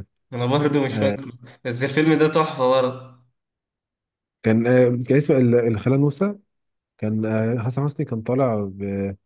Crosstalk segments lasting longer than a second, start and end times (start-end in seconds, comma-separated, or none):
none